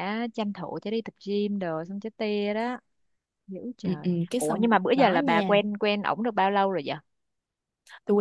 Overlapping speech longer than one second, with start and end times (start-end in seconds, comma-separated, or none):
3.8-5.6